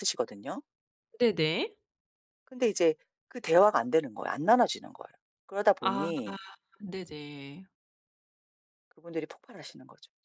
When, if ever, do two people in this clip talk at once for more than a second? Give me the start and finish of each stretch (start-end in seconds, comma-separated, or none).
none